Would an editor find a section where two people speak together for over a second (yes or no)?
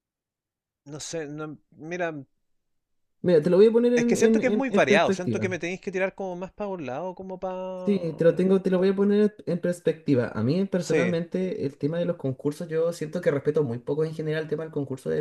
yes